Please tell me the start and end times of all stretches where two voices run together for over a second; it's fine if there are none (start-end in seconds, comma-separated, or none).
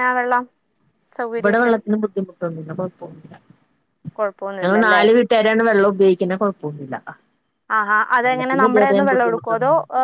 8.2-9.5